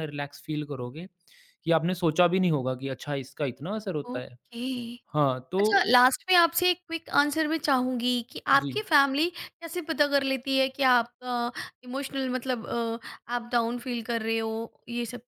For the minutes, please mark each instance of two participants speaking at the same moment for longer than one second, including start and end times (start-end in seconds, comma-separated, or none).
none